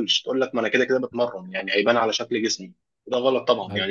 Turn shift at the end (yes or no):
no